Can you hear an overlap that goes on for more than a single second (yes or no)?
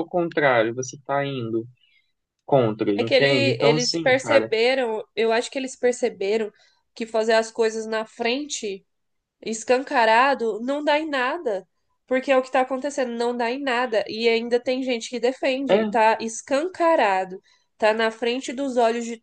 yes